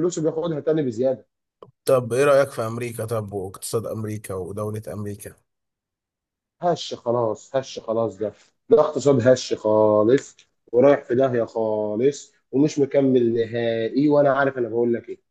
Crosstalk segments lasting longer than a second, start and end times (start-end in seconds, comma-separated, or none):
none